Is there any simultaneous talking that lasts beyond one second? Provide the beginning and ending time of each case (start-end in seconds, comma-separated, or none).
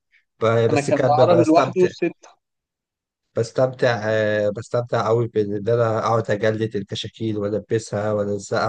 0.7-1.9